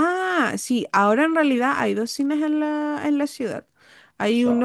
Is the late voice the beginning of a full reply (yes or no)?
no